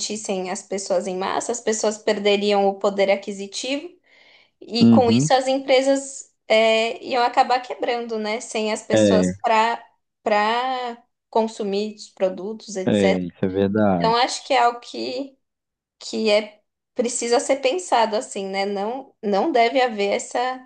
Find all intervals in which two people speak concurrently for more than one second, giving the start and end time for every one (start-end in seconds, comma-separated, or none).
none